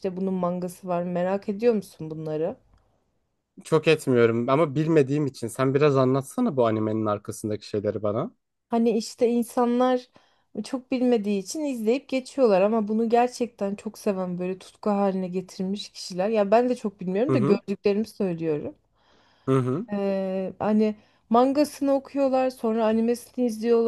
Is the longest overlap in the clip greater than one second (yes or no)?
no